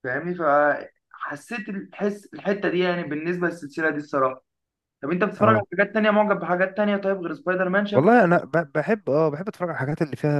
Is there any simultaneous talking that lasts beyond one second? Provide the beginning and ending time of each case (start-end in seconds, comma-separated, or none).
none